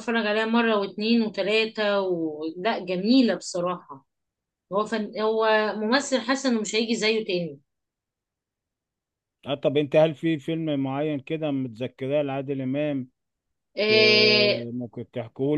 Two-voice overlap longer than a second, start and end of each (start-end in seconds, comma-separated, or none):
none